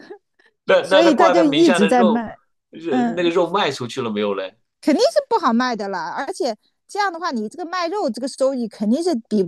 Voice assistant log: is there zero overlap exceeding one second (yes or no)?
no